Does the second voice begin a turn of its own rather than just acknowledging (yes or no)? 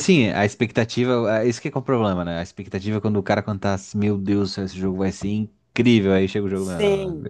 yes